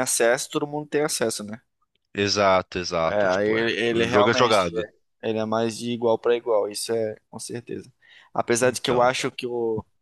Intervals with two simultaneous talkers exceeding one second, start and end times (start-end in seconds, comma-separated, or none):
3.1-4.9